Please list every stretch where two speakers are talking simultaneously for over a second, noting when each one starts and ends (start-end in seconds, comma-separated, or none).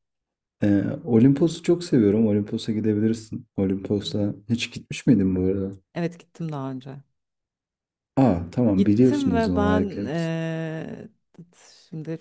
8.8-10.3